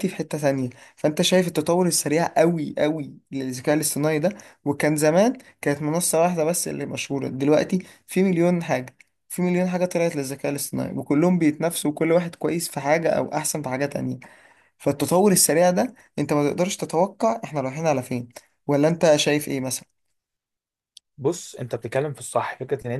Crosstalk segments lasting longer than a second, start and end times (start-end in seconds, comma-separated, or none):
none